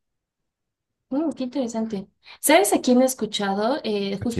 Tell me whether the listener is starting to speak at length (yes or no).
no